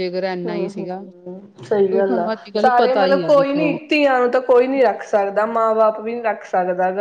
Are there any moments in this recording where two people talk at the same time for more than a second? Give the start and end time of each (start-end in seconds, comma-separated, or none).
2.0-3.8